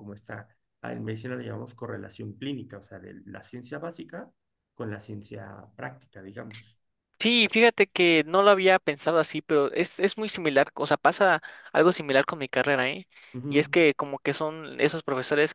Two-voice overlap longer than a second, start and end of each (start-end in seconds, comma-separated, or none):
none